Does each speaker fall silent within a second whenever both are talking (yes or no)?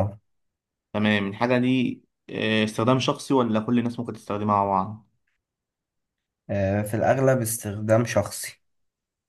yes